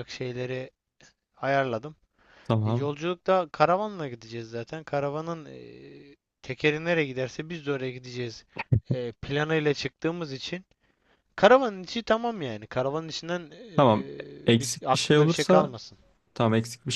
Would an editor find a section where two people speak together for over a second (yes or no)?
yes